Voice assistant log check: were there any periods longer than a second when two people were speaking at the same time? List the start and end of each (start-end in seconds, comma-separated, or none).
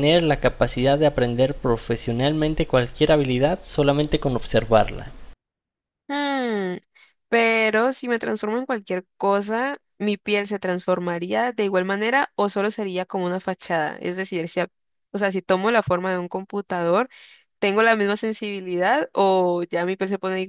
none